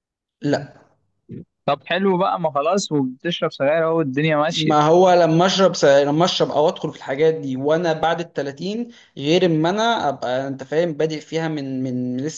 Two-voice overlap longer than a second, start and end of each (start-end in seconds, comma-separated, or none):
none